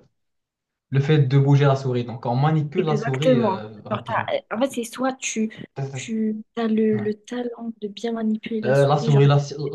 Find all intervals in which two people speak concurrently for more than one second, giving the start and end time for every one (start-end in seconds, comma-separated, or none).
2.8-4.3